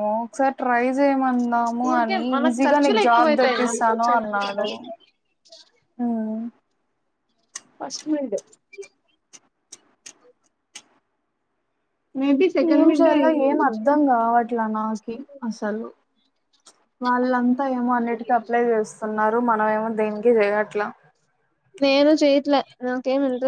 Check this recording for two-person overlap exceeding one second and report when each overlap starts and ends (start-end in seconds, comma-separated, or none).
1.9-4.7